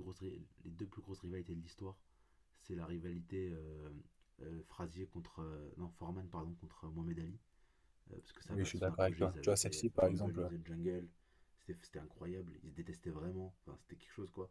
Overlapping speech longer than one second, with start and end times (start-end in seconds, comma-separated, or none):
8.5-10.5